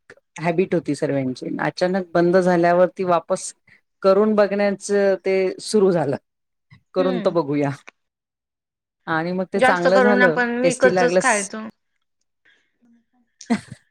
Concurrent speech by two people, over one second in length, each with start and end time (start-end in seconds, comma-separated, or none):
9.6-11.3